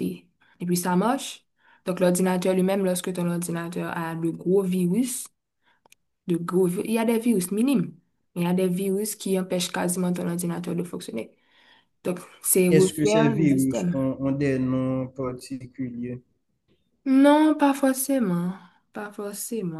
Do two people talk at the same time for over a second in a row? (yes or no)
yes